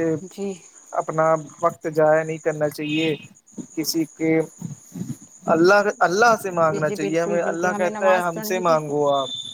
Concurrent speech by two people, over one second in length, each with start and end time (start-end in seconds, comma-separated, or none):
6.7-8.8